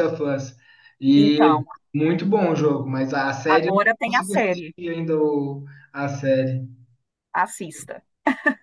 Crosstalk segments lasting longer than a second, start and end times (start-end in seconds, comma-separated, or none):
3.5-4.7